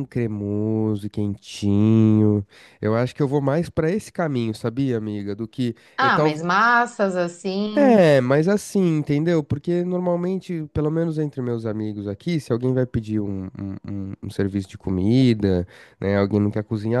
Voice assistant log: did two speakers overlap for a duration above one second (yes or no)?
no